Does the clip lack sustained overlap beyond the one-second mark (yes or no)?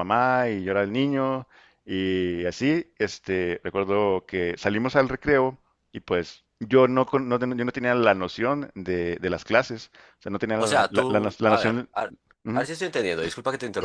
no